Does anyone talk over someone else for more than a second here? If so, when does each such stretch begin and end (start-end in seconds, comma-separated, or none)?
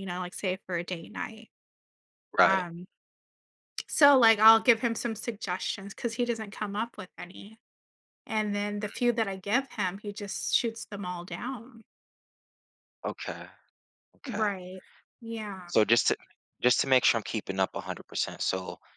none